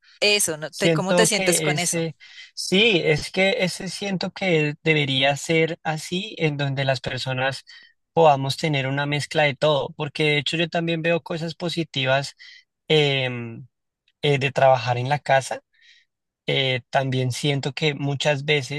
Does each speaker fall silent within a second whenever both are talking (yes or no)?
no